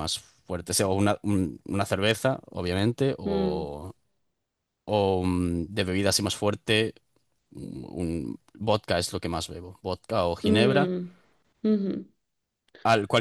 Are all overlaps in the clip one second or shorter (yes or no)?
yes